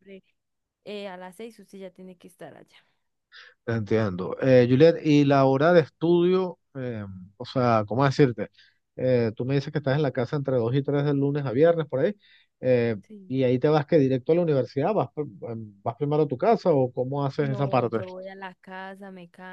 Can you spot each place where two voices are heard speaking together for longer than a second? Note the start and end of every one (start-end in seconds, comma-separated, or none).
none